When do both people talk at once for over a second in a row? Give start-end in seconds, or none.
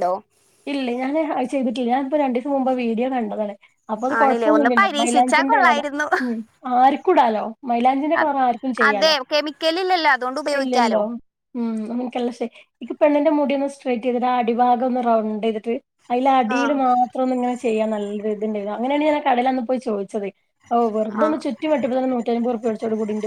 4.2-5.7